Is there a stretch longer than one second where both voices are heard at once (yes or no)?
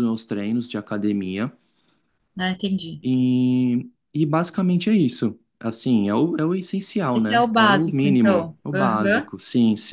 yes